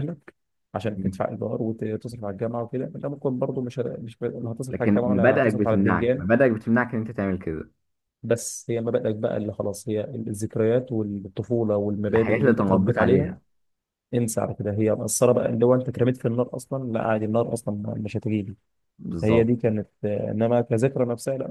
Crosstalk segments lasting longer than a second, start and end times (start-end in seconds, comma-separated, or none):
4.7-6.2, 12.1-13.3